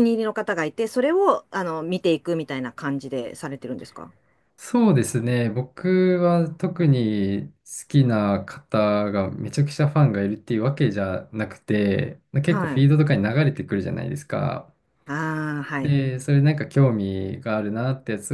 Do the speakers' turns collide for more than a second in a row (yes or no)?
no